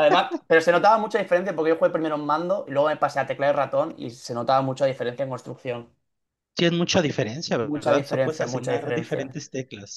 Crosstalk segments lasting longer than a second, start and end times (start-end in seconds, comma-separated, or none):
7.6-9.3